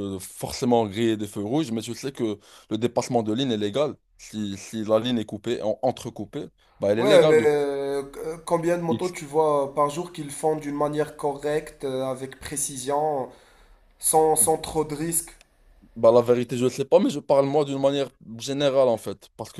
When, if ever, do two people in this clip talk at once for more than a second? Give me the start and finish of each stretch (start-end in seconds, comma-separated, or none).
none